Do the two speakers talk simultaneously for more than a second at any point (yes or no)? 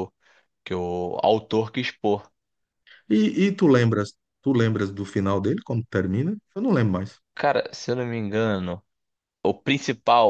no